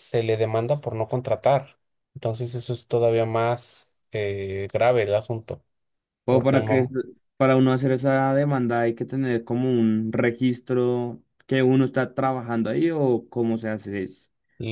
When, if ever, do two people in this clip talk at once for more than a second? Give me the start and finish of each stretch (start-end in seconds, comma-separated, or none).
none